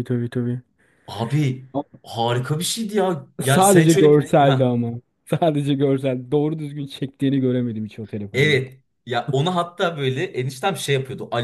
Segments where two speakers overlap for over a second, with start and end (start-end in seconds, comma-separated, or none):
3.5-4.8